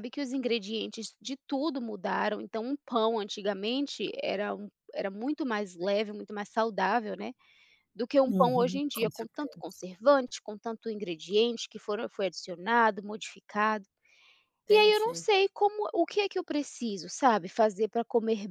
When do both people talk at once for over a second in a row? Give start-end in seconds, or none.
8.3-9.8